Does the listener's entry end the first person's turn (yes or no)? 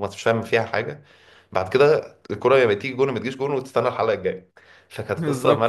yes